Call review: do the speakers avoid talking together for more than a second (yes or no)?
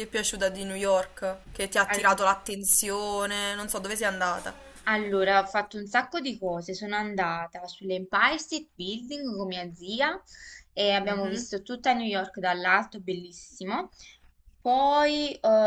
yes